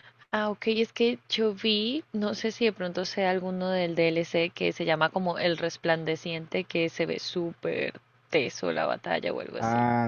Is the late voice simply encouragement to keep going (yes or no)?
no